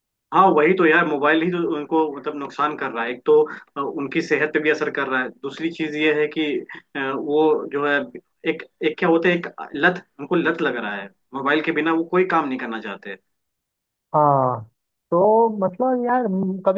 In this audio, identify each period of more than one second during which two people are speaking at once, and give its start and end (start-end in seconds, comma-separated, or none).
none